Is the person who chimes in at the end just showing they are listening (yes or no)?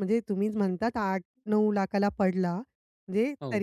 yes